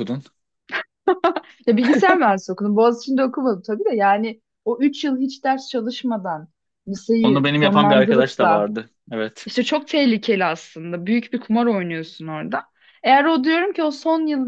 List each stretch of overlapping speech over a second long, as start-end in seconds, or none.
7.2-8.7